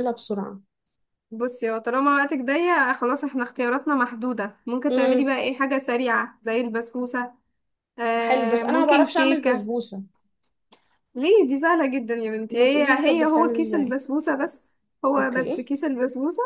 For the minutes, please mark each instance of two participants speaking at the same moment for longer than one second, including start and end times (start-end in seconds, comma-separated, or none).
8.2-9.7, 12.5-14.0